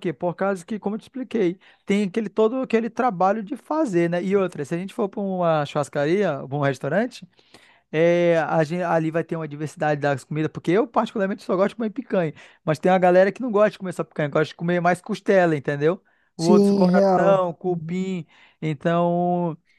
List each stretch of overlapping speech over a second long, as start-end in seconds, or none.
16.4-18.1